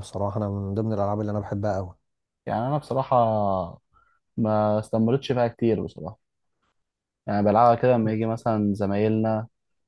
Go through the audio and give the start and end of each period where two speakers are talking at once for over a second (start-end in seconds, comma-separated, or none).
none